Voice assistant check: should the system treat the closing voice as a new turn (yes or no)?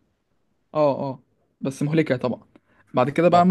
no